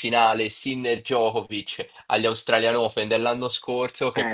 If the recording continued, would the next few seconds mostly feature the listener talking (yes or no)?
no